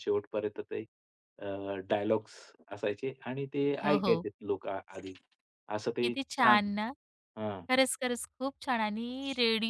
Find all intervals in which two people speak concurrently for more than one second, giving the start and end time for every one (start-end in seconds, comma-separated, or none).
none